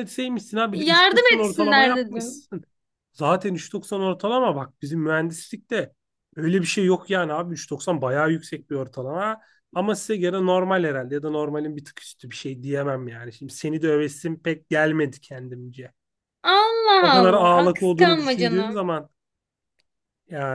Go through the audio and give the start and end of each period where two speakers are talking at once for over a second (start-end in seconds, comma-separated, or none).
0.7-2.5, 17.0-18.8